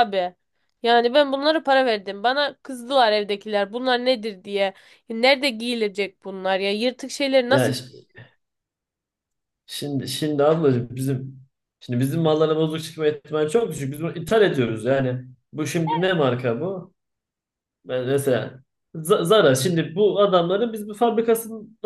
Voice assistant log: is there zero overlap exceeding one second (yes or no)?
yes